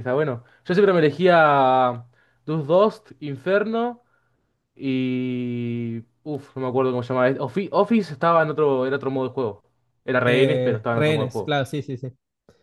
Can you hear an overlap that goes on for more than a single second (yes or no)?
yes